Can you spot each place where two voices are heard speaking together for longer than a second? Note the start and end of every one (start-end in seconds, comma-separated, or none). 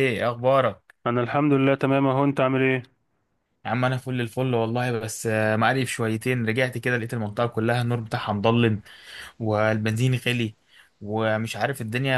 none